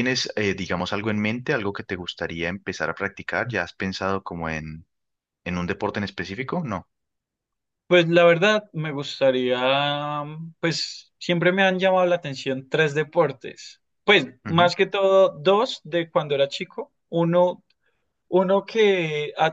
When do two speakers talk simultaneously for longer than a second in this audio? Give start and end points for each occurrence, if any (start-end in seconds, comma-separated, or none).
none